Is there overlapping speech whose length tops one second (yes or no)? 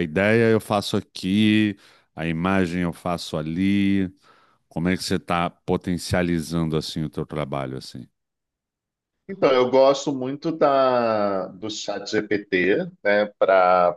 no